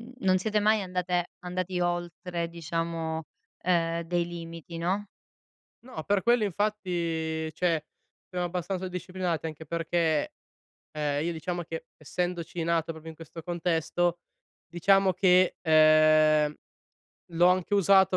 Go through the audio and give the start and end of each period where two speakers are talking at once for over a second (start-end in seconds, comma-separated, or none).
none